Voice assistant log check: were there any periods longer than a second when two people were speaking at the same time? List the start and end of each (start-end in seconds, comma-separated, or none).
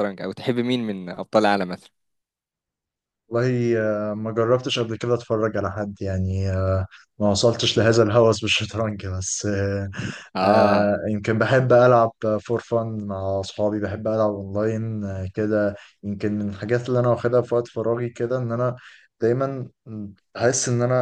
none